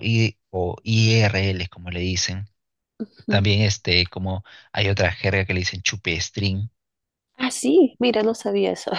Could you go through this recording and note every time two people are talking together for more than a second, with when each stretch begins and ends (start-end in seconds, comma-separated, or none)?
none